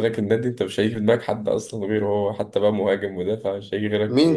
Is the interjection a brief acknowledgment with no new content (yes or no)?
no